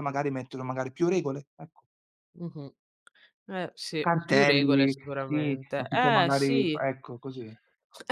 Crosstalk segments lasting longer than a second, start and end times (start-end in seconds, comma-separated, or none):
4.0-6.8